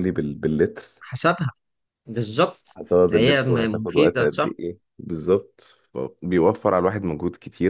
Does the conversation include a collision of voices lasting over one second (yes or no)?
yes